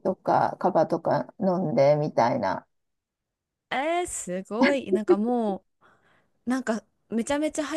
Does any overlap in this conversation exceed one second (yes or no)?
no